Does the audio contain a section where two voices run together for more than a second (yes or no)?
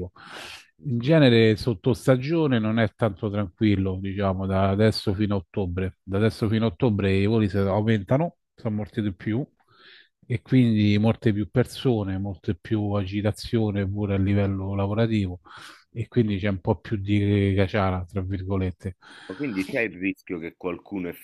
no